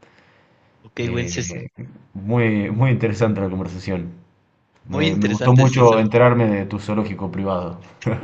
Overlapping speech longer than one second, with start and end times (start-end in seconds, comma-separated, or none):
4.9-6.2